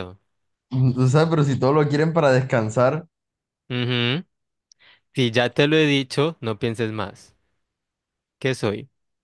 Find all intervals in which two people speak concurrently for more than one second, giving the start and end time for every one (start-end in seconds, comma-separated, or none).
none